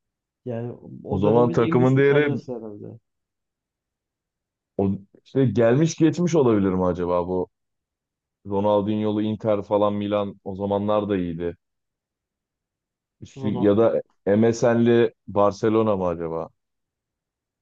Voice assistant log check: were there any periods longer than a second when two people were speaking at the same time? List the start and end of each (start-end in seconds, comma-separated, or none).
1.1-2.4